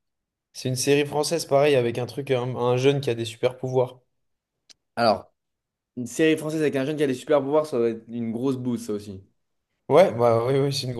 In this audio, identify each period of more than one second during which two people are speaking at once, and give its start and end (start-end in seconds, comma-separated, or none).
none